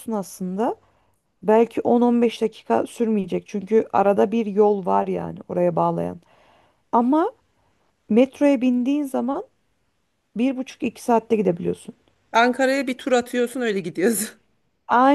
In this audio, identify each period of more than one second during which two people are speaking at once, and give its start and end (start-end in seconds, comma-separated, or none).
none